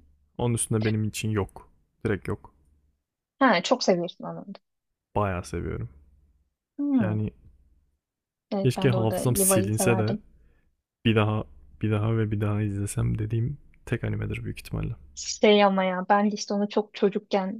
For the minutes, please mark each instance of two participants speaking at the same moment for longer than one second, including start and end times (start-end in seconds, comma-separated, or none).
8.6-10.2